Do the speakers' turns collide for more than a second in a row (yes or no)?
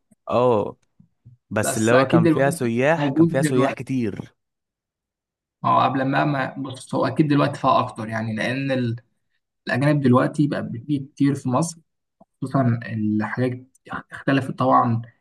yes